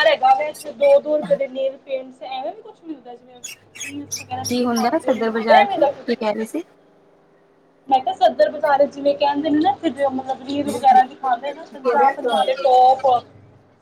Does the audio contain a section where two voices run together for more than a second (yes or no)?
yes